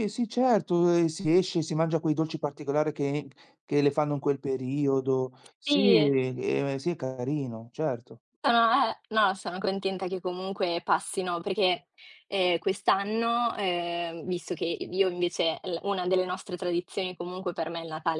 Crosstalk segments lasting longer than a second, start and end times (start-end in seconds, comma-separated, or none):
none